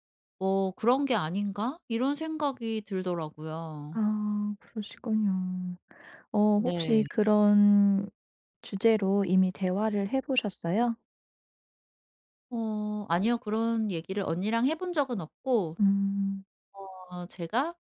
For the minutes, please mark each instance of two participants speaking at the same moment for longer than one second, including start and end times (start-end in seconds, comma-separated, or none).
none